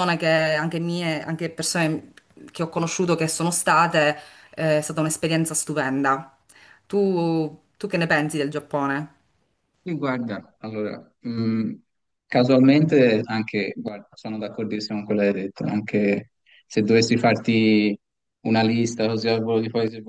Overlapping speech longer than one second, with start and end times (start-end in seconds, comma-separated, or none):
none